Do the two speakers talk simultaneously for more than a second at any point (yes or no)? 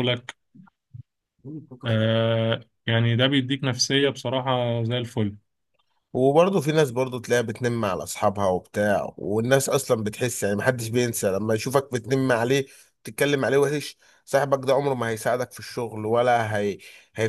no